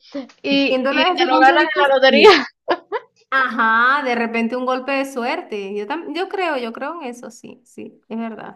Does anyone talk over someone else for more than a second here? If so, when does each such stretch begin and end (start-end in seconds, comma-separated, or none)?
0.7-2.4